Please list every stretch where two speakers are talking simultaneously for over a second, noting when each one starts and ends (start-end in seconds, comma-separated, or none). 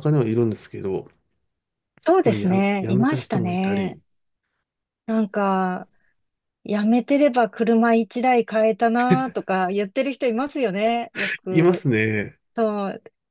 2.2-4.0